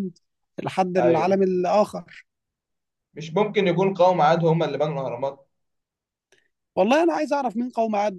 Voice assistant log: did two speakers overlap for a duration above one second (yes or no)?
no